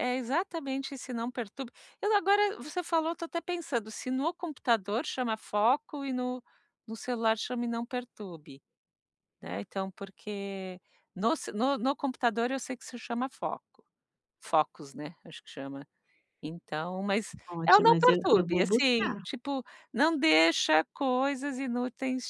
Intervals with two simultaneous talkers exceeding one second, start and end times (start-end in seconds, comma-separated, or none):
17.5-19.2